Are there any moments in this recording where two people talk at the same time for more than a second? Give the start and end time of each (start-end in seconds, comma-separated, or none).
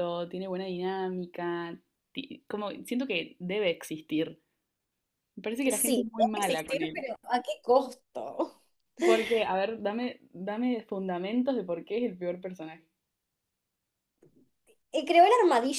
5.7-7.0